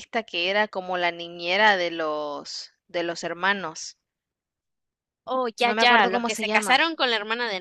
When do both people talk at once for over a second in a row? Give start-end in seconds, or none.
5.6-6.8